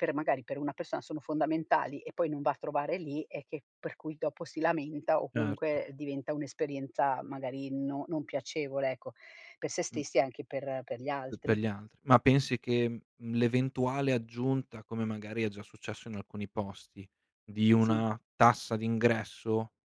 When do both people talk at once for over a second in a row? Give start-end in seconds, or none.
none